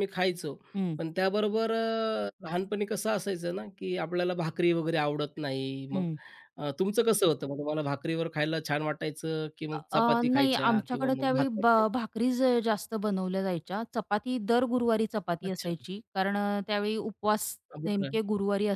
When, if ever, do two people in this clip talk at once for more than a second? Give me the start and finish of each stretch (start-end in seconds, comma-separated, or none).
9.7-11.8